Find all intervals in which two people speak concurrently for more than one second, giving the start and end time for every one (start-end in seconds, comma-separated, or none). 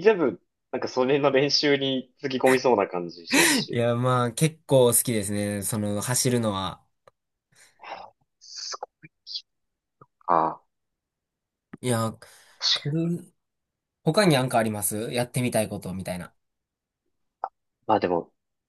none